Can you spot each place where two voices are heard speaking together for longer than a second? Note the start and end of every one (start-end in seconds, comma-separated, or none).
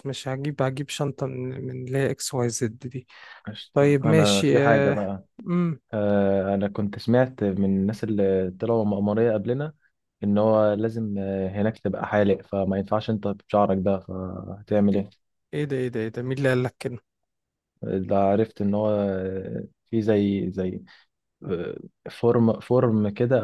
3.7-5.0